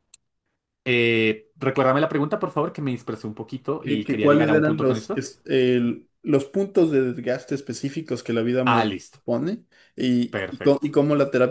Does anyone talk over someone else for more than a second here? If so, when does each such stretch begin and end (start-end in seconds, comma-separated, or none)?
3.8-5.2